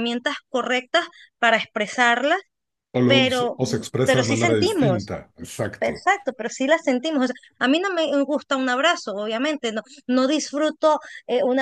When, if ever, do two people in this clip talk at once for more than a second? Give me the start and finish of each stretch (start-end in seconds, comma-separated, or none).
3.0-5.1